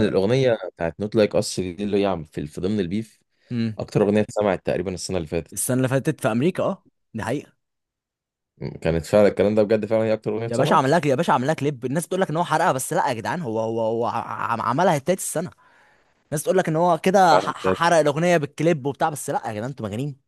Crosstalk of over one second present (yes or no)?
no